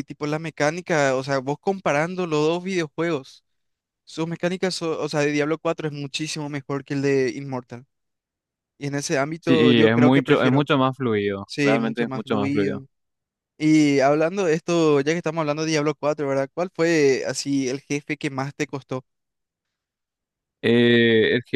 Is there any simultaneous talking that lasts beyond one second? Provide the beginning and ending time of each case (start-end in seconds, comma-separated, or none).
9.4-10.7, 11.5-12.8